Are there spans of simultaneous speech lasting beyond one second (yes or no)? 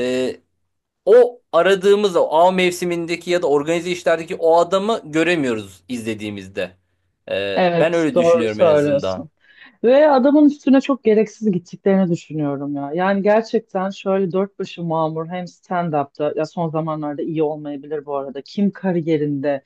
yes